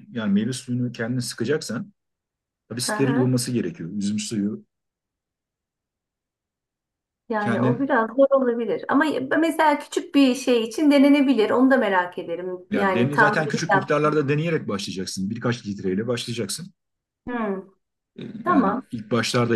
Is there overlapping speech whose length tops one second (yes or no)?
yes